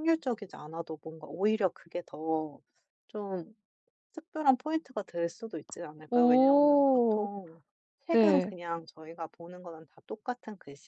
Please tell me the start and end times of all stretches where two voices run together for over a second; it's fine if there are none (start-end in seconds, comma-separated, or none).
6.1-7.3